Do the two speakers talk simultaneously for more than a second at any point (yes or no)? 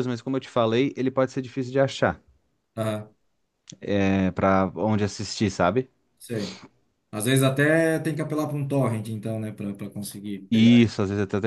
no